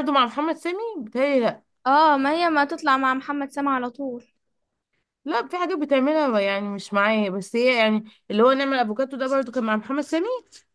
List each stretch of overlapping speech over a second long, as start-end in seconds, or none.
none